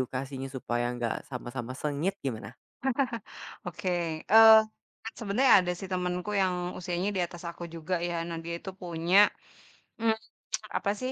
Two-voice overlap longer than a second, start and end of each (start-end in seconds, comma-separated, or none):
none